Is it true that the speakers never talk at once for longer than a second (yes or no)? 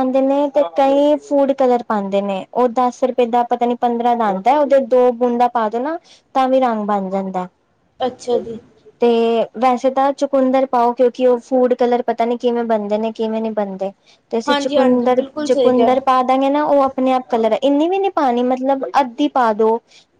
no